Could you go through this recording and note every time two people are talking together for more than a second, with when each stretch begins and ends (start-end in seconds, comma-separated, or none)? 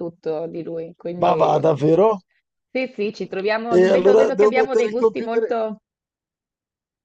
3.7-5.4